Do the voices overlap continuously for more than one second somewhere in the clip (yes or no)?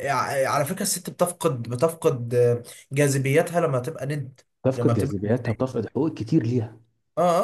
yes